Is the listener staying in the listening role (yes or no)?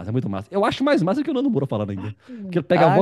yes